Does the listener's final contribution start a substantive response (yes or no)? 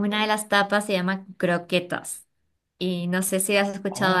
yes